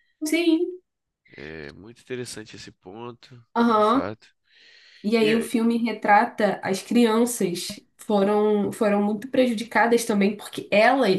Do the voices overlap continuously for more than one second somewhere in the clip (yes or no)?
no